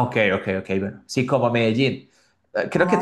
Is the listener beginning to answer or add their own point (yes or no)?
no